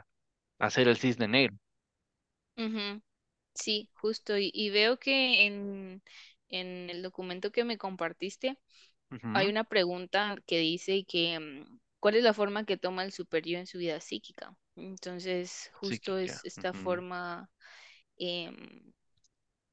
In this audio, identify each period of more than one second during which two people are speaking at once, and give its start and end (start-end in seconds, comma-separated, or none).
15.8-17.0